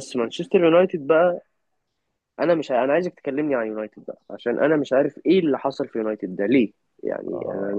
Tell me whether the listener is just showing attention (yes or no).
yes